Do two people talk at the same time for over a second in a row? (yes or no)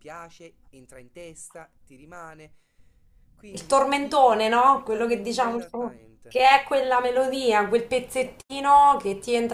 yes